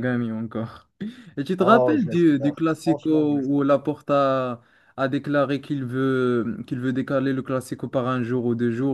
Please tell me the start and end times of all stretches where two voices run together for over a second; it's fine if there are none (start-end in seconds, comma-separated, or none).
1.6-3.7